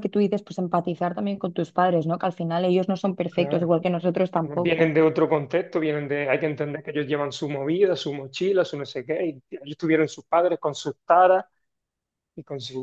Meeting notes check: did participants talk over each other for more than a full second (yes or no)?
no